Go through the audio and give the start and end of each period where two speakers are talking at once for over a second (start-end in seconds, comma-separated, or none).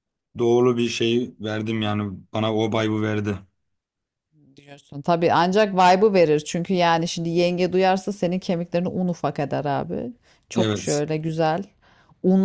none